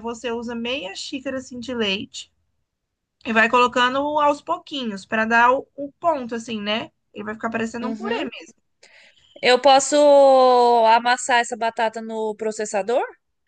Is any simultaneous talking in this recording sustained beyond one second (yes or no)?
no